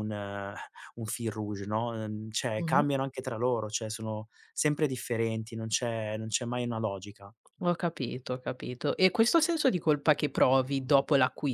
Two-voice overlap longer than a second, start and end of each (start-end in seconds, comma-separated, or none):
none